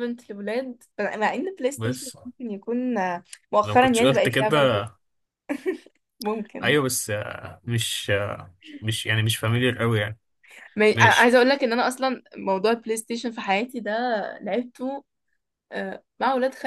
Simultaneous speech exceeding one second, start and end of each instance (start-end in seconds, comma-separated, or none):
3.6-4.8